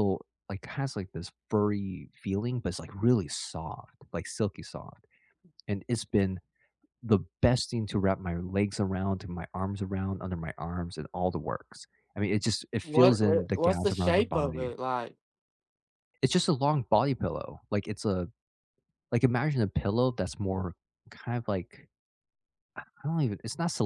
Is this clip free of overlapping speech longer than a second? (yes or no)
no